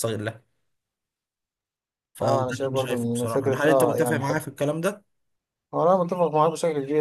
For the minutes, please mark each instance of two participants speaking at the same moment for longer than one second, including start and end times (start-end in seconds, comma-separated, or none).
2.2-4.2